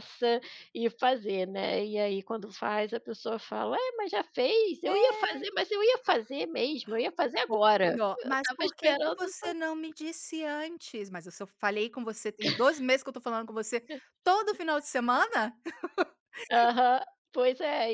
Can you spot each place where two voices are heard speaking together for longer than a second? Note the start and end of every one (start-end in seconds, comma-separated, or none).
7.5-9.2